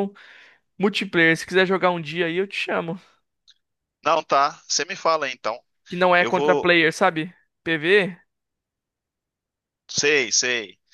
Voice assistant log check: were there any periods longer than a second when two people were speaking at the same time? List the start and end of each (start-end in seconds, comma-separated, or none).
none